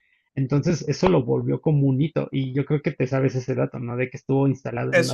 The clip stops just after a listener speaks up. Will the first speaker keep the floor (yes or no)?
yes